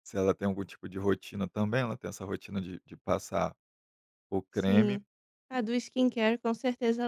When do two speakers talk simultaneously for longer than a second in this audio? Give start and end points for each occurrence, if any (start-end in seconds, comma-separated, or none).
none